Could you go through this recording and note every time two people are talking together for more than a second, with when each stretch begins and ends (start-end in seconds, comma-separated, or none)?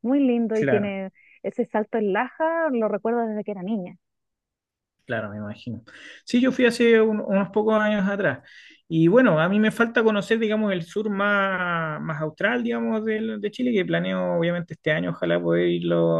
none